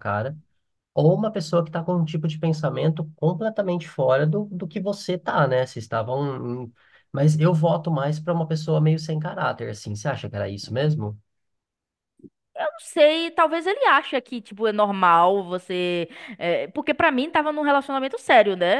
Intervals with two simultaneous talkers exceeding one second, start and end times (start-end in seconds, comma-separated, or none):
none